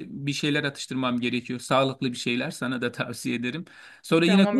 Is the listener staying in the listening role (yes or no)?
no